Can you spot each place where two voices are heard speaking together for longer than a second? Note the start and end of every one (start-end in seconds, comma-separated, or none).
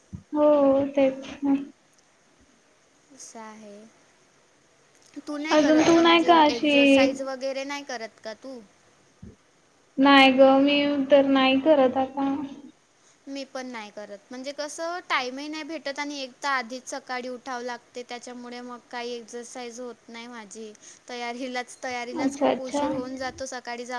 5.6-7.1